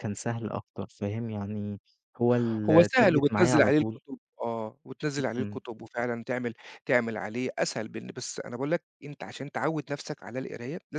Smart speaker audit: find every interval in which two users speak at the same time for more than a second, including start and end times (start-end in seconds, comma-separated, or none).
2.7-4.0